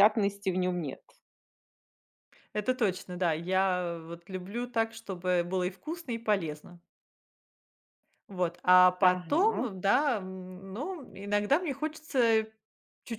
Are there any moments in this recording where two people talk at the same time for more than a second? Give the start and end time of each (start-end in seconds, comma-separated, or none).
none